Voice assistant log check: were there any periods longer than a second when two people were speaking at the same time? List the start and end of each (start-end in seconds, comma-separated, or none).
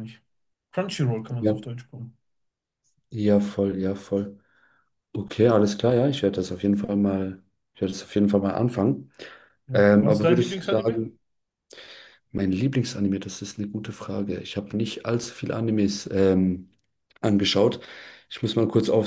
9.7-11.0